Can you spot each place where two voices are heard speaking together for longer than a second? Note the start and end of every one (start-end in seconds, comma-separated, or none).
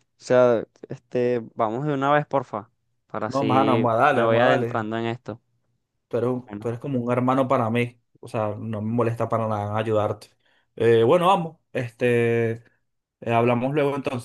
3.2-4.9